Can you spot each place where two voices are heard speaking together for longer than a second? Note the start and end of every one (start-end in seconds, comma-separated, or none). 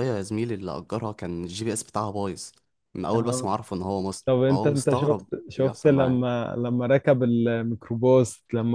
4.2-6.2